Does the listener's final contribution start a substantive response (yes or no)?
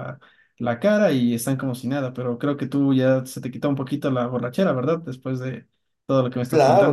yes